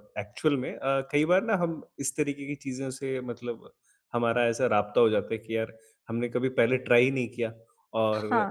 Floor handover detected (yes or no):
no